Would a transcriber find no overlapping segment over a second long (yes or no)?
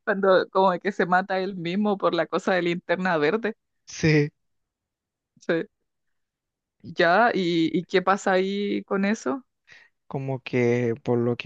yes